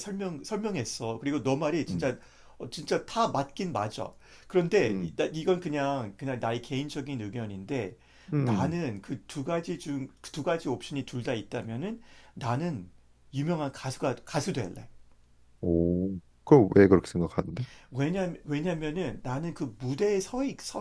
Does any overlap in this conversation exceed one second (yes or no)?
no